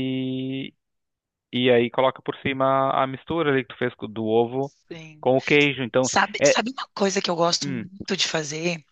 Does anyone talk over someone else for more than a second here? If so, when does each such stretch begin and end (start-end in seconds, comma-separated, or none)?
none